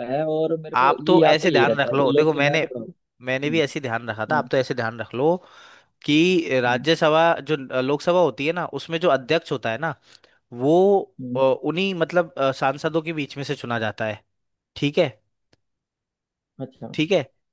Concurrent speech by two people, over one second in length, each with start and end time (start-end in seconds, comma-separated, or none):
0.8-2.7